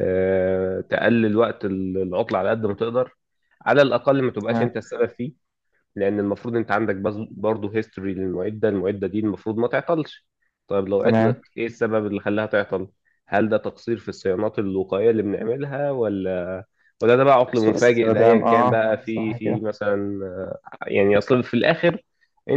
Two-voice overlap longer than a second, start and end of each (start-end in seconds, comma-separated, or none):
17.5-19.6